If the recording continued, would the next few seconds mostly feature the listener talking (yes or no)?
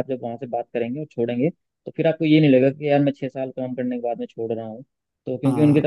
no